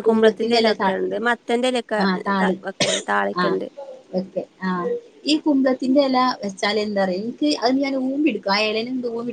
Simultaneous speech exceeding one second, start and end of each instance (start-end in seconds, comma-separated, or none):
none